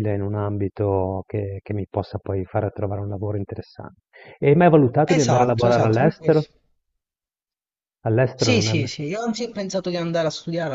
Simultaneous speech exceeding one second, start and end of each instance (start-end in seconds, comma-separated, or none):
5.1-6.4